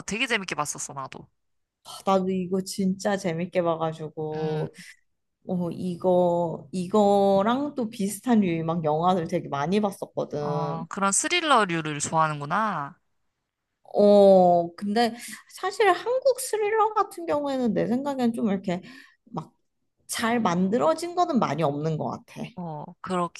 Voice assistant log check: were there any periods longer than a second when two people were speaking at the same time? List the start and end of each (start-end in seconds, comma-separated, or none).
none